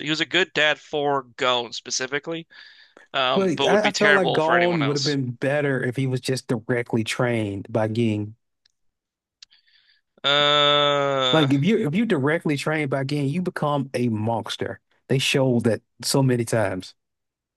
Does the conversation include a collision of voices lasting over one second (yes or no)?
yes